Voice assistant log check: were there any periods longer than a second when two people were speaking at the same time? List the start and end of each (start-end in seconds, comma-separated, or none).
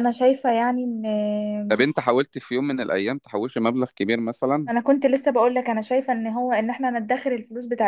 none